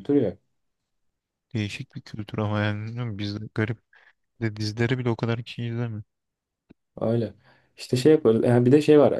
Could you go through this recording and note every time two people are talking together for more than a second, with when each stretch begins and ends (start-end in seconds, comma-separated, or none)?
none